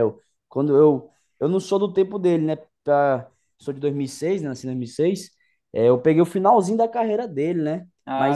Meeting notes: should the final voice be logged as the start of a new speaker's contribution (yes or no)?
no